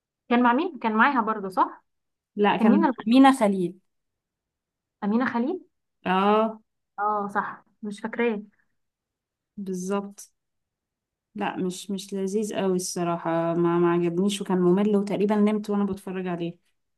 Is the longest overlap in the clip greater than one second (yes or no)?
no